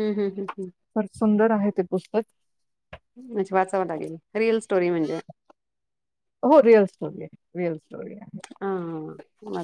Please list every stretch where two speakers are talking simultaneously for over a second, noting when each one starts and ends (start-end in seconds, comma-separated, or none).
none